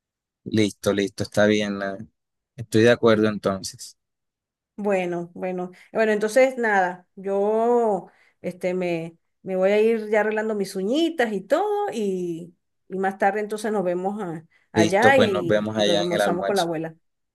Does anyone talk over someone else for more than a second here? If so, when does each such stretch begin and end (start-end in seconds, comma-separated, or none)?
14.7-16.7